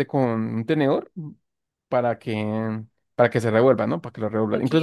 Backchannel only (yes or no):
yes